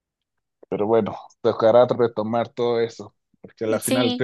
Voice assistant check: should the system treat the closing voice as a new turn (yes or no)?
no